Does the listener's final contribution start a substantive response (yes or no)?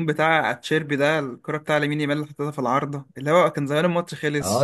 yes